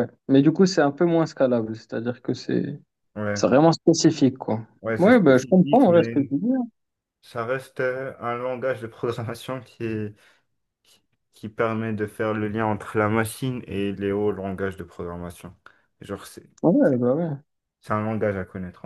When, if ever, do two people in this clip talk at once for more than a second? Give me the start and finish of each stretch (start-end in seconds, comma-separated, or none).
4.8-6.3